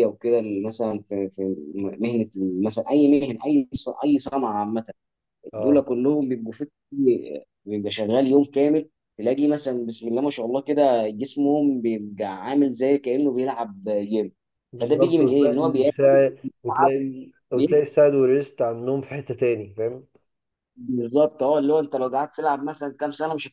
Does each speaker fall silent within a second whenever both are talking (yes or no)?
no